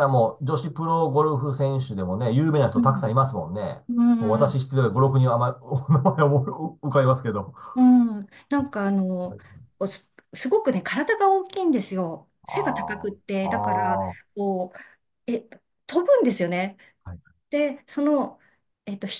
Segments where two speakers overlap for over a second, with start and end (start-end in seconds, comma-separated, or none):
12.5-14.0